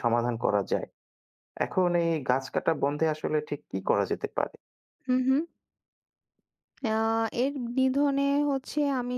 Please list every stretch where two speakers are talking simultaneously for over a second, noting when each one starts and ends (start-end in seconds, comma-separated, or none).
none